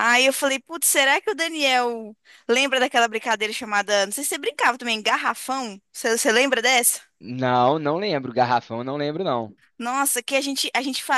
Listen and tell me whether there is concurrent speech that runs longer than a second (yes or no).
no